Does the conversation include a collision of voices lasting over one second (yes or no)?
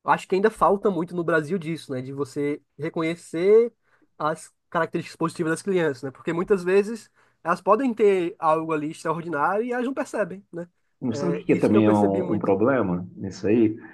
yes